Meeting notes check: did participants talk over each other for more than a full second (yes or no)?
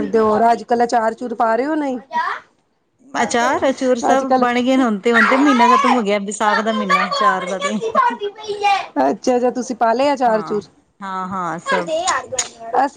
no